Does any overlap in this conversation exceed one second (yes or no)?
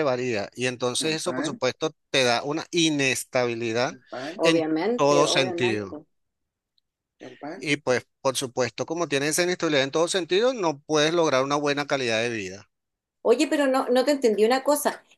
yes